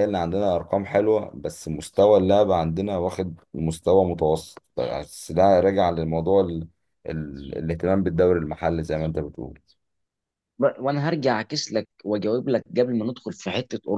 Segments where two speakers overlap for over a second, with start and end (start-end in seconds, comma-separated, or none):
none